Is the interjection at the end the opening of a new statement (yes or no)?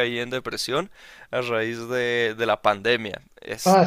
yes